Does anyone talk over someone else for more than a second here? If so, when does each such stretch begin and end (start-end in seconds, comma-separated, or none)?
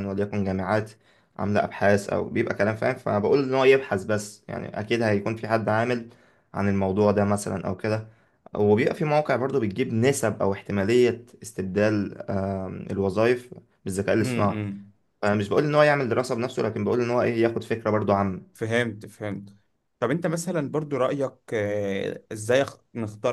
none